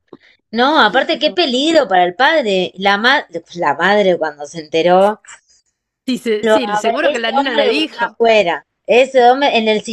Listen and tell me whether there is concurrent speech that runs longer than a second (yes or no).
yes